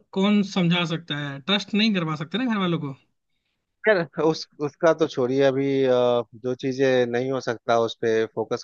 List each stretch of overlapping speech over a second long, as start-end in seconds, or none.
none